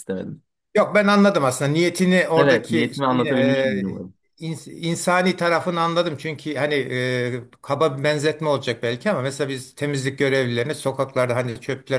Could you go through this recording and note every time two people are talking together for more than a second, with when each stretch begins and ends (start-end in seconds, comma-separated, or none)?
2.4-3.9